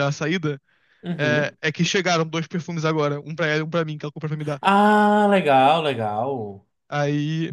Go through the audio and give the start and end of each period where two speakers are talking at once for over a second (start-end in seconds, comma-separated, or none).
none